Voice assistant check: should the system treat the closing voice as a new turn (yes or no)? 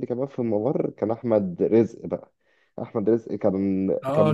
yes